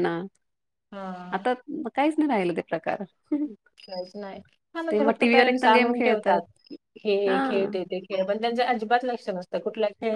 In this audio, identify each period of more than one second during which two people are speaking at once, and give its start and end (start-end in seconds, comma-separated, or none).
4.9-6.4